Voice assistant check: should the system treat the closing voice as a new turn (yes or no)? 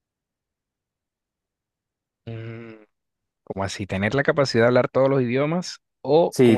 yes